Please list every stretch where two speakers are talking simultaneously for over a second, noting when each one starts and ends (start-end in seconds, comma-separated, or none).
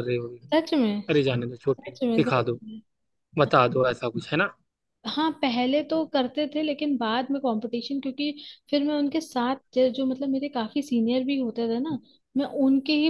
1.1-2.6